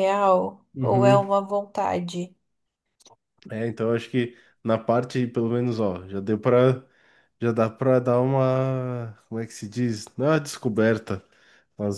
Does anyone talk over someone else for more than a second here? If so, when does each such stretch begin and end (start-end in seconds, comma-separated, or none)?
none